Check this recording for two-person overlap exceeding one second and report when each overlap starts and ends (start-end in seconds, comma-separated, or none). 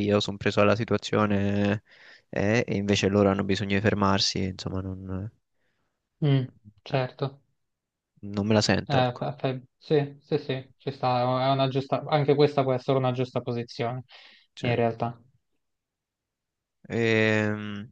none